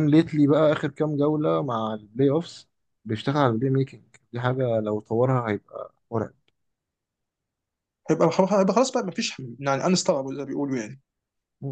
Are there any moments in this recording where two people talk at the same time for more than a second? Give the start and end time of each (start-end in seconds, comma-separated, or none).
none